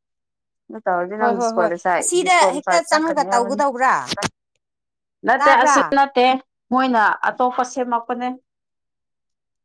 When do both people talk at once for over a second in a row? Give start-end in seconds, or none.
1.2-3.6